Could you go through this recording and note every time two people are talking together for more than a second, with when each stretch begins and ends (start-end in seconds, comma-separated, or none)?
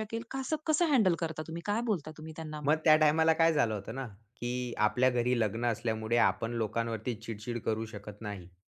none